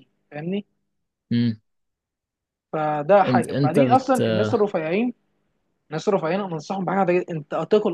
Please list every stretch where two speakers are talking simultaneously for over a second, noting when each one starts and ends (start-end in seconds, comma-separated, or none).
3.2-4.7